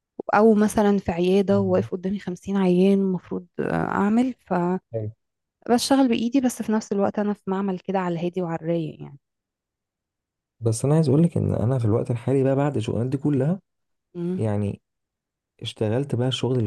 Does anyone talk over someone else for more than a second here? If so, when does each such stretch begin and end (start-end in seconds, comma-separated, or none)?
none